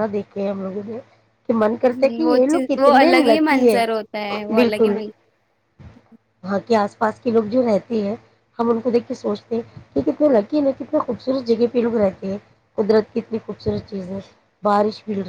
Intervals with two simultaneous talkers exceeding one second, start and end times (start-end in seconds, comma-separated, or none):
1.9-3.8